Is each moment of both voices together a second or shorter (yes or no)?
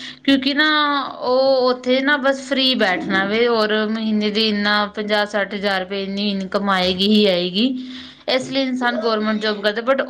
no